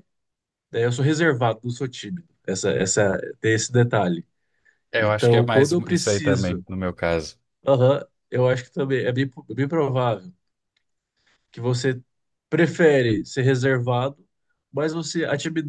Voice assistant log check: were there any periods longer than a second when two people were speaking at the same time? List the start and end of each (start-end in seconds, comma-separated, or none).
5.0-6.7